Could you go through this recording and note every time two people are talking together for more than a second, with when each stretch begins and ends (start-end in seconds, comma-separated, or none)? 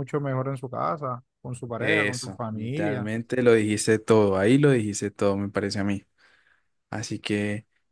1.8-3.1